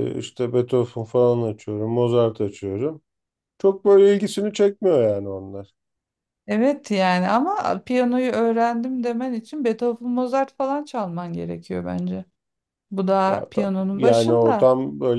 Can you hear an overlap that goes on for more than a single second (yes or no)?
yes